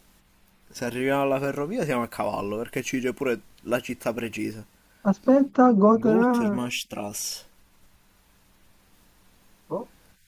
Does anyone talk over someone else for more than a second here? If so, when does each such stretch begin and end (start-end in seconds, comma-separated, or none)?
none